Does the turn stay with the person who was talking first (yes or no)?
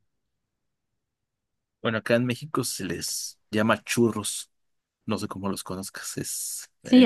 no